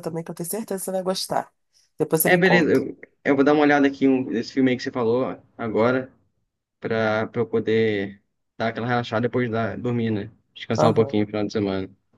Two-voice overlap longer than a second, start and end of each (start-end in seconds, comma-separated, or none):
none